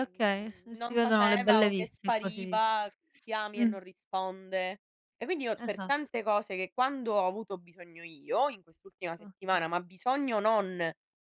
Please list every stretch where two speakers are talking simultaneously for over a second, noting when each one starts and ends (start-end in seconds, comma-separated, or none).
0.7-2.6